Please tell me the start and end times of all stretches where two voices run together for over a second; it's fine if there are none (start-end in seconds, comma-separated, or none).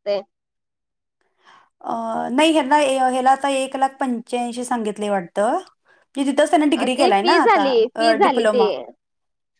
7.0-8.7